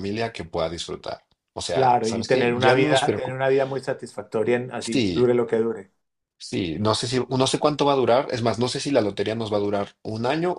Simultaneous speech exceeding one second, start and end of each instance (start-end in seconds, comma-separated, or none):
1.7-3.4